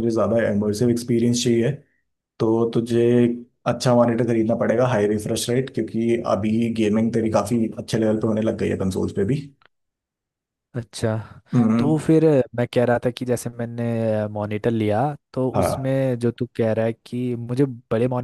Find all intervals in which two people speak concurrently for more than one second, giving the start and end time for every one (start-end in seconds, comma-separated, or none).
none